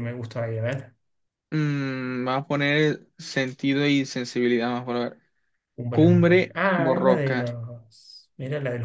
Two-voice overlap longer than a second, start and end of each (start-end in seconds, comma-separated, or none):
5.9-7.4